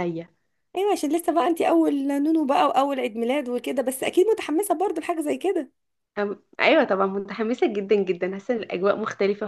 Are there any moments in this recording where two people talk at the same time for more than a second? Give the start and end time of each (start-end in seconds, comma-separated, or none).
none